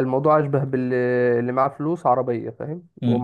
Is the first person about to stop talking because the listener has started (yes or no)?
yes